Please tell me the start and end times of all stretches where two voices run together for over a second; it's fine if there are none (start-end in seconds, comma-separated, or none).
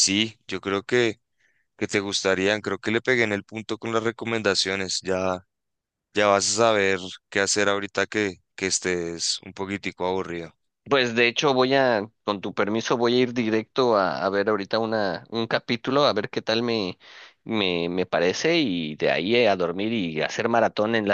none